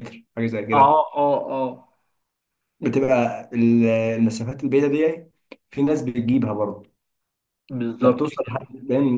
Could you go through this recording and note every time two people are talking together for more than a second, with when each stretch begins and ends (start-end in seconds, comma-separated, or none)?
none